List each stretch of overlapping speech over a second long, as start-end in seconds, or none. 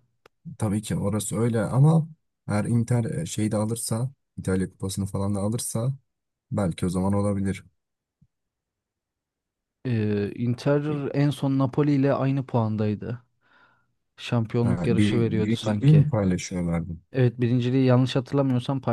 14.6-16.1